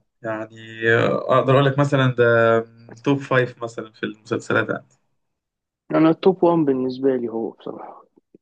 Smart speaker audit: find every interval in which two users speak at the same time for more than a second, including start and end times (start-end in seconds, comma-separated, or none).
none